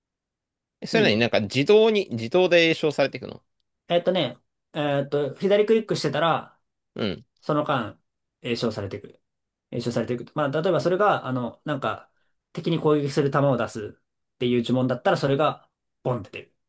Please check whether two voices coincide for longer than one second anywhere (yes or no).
no